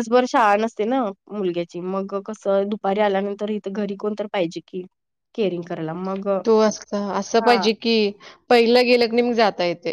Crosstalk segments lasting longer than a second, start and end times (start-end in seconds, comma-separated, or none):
none